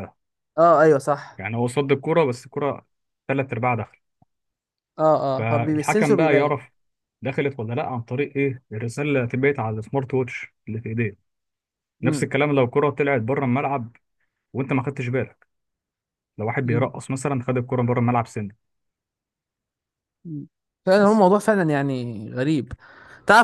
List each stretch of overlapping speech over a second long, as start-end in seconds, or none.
5.4-6.6